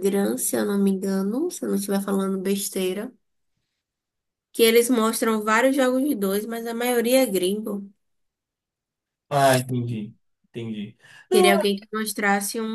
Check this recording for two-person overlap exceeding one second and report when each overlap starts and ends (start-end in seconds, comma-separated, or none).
none